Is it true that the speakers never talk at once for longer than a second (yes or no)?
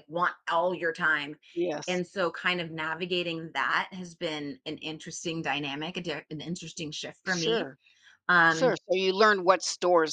yes